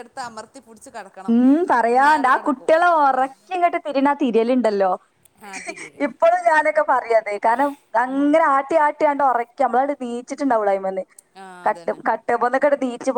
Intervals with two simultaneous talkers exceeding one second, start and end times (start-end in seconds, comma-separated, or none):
none